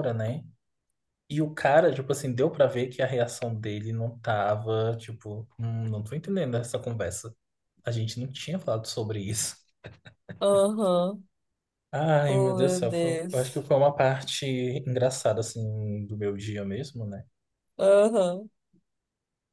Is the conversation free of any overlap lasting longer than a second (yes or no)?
no